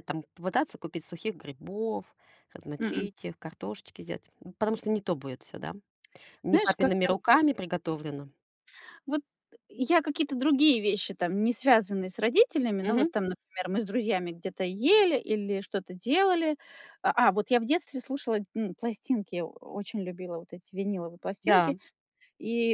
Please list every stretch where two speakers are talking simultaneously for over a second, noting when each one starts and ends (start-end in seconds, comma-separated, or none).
none